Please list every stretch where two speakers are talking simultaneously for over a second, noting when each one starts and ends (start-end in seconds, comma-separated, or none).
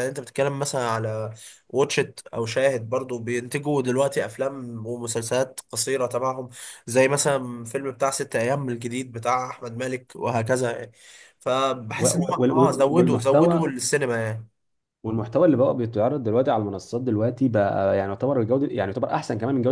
12.0-13.7